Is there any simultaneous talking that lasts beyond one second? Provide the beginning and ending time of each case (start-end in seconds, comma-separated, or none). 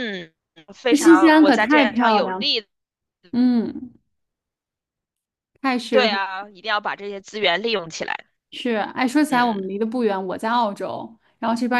0.9-2.5